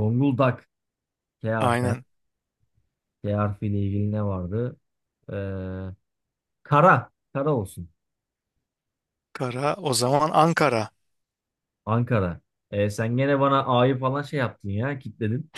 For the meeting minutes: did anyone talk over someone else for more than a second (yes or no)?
no